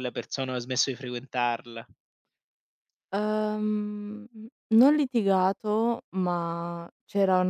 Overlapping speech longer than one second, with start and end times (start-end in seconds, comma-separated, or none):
none